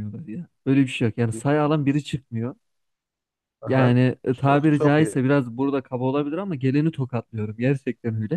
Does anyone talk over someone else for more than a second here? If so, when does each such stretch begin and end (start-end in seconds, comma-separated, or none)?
3.7-5.2